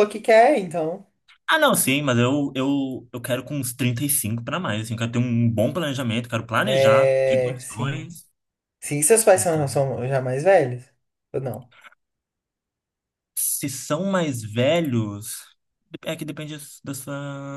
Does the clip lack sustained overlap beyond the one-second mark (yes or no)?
no